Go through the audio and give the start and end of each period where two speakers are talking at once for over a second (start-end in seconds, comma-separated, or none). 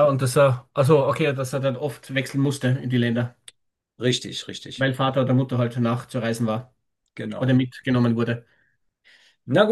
none